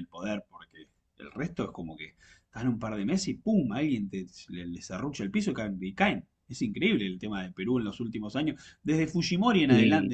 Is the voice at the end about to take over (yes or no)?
no